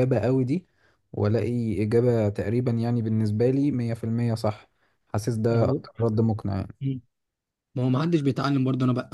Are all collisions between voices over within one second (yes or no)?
yes